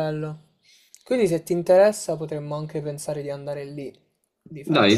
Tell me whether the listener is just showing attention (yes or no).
no